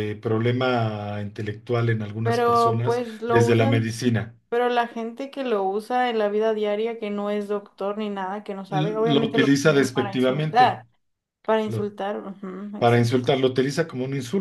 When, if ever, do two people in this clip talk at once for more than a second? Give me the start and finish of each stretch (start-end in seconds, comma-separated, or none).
2.2-3.9, 8.7-10.8